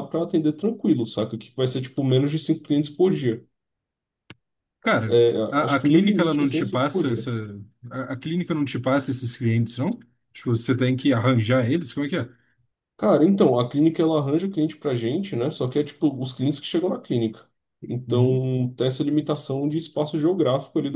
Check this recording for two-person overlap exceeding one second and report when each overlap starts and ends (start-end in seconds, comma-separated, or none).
5.1-7.3